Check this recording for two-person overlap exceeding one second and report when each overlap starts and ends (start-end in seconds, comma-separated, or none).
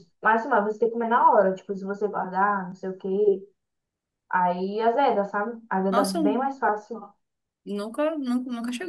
none